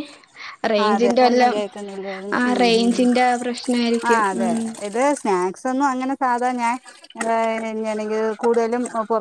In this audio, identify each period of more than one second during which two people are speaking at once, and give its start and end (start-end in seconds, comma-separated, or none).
0.8-3.0